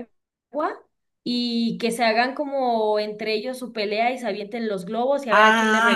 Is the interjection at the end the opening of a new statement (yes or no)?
yes